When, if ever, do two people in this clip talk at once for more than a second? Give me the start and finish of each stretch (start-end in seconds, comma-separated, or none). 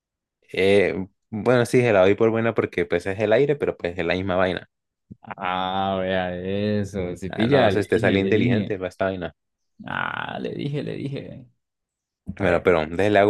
7.3-8.8